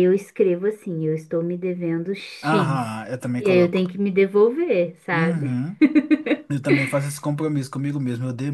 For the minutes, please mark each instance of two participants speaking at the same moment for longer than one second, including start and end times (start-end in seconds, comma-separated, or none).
2.4-3.9